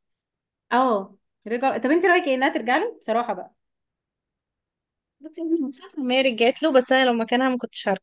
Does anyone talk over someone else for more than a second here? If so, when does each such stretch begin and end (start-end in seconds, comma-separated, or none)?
none